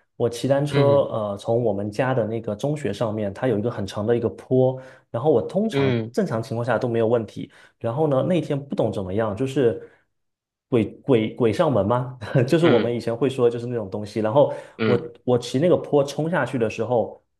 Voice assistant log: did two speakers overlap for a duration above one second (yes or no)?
no